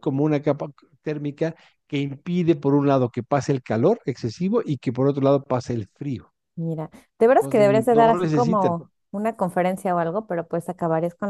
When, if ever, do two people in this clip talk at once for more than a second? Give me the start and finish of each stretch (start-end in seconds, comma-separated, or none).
7.4-8.7